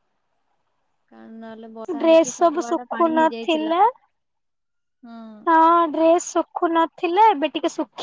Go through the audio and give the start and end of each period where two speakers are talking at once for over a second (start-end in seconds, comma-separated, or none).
2.0-3.7